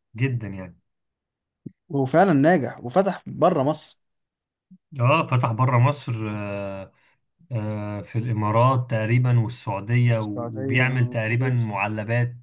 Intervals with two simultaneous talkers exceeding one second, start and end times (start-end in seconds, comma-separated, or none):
10.2-11.7